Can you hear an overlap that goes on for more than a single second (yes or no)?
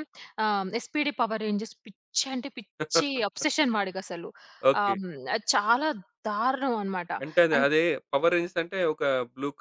no